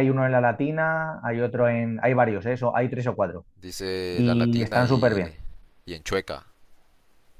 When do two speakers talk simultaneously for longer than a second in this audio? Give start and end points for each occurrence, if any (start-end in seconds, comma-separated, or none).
4.1-5.3